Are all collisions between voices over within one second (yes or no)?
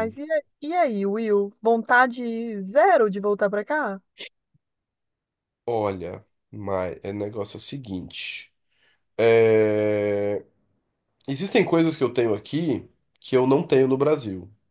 yes